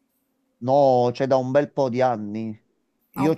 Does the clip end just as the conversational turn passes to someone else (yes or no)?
no